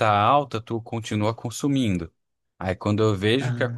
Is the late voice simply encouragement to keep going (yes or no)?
yes